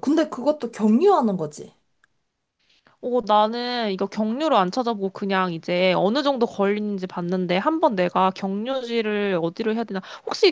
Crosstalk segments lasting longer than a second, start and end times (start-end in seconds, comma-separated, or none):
none